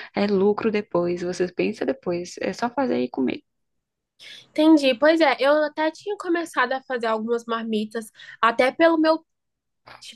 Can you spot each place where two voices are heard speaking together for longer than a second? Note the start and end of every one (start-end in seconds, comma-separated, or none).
none